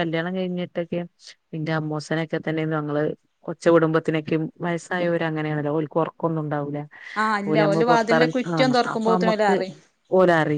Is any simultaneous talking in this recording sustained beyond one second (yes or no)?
yes